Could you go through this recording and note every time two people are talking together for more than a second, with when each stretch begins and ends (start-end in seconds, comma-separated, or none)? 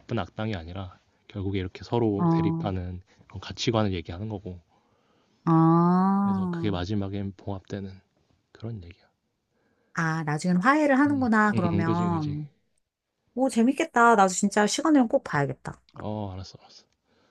11.1-12.4